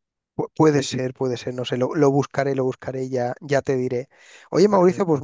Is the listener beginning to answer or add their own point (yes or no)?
no